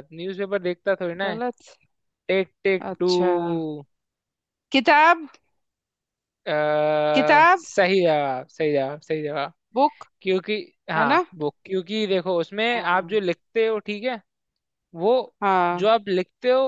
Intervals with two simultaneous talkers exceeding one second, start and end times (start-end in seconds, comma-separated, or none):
none